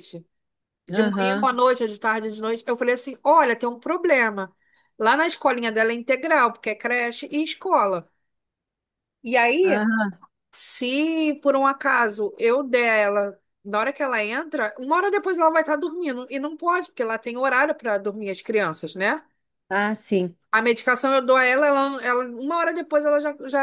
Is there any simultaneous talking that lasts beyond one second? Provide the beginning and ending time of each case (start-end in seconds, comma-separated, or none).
none